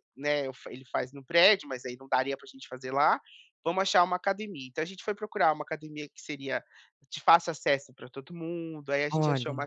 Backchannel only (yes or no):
yes